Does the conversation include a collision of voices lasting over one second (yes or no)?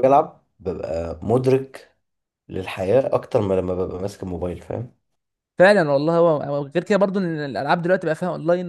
no